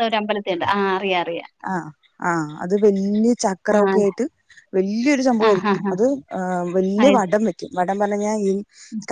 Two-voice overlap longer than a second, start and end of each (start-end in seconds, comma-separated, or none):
none